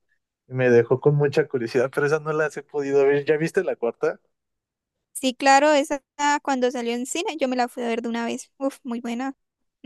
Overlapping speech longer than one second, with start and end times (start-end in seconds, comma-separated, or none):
none